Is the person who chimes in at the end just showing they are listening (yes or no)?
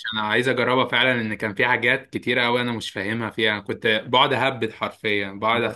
yes